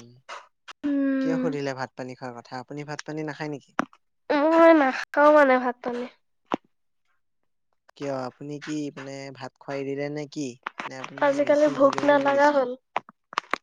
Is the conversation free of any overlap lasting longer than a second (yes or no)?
yes